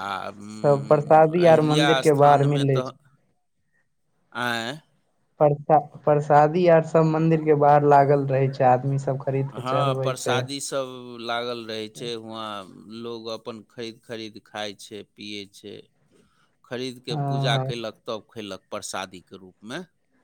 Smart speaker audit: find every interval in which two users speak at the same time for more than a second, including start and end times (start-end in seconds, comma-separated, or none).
0.6-2.9